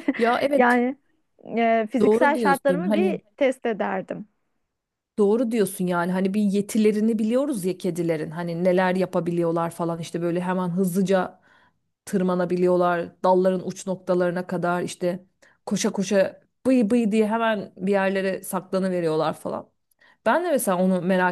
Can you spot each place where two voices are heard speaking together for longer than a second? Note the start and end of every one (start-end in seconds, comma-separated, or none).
2.0-3.2